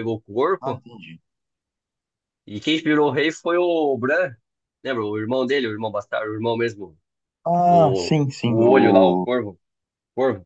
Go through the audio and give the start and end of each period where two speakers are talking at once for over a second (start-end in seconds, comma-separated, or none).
7.7-9.3